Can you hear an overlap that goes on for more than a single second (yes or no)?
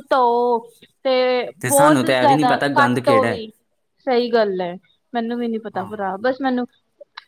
yes